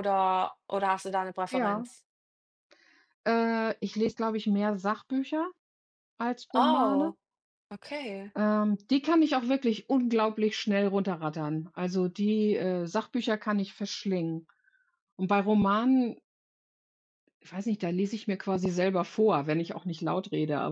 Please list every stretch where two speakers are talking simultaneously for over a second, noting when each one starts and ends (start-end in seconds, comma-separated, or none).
none